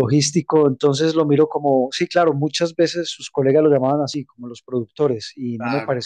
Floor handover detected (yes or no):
no